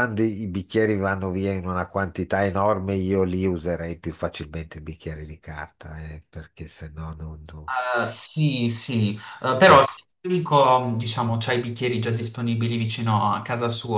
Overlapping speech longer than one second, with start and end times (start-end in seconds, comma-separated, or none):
none